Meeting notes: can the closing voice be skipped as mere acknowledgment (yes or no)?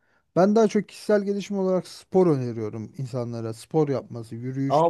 no